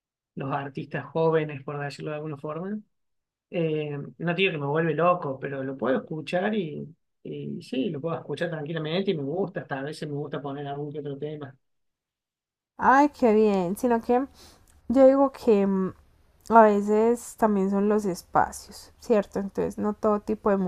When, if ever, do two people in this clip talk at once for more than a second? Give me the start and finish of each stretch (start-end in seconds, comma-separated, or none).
none